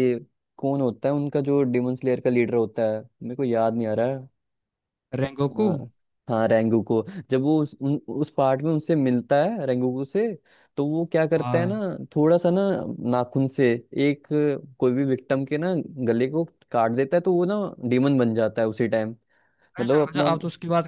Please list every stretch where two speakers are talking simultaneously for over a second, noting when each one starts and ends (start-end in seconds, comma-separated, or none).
none